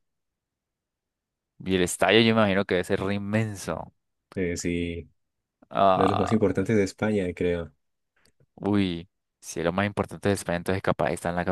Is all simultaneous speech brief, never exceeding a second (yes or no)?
yes